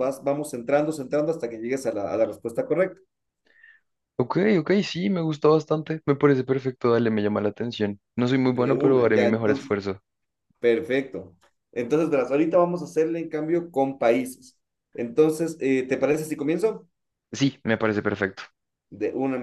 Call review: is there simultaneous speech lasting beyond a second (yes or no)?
yes